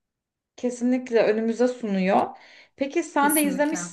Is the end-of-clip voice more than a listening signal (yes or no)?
no